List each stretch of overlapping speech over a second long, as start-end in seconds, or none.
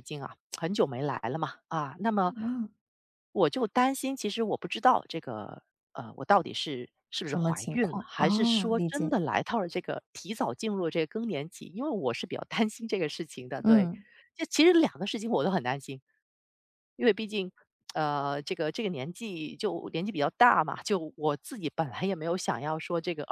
7.2-9.2